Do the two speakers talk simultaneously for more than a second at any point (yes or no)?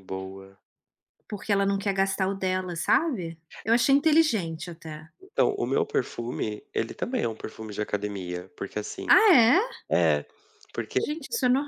no